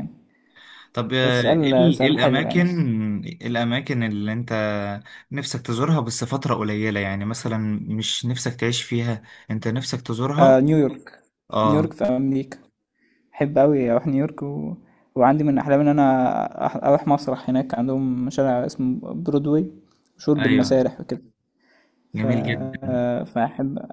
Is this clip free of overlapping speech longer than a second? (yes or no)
no